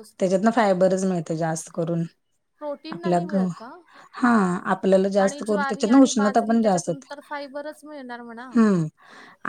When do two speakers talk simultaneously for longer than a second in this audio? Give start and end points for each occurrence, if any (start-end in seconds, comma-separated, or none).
5.2-7.1